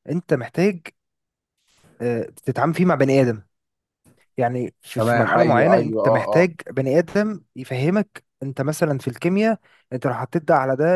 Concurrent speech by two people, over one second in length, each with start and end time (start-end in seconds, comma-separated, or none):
5.0-6.5